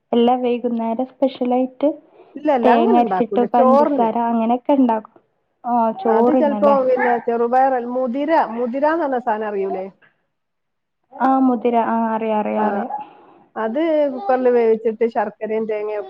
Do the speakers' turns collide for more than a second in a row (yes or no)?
yes